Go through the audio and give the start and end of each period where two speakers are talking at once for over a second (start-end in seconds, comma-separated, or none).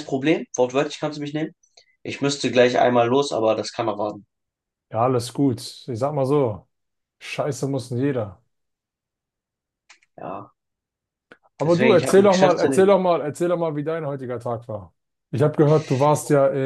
11.6-12.9